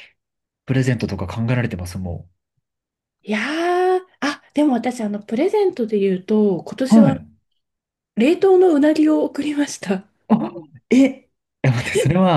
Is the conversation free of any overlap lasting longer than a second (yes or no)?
yes